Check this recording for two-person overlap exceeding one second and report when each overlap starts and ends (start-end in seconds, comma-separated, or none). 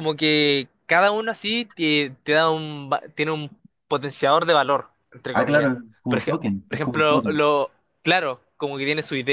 5.3-7.4